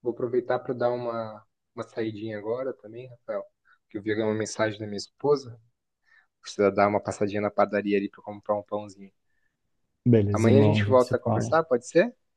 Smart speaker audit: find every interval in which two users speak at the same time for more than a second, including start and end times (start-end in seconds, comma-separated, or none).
10.3-11.6